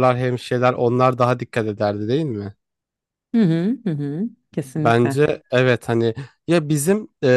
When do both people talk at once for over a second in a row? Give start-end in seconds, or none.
none